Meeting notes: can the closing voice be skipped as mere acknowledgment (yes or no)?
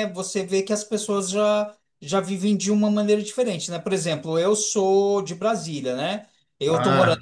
yes